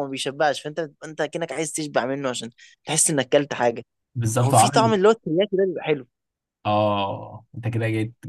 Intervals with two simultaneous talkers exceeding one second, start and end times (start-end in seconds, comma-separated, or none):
none